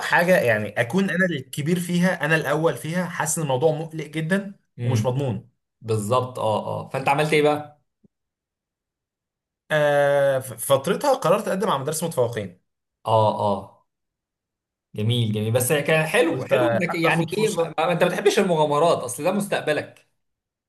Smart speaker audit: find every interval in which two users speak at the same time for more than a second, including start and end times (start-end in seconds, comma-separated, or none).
16.3-17.8